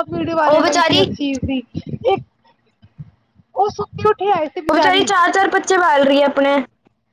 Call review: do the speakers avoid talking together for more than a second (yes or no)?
yes